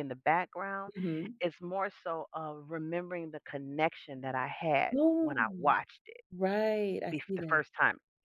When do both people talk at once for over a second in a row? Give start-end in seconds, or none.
none